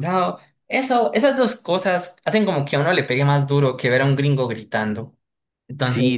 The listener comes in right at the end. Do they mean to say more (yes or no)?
yes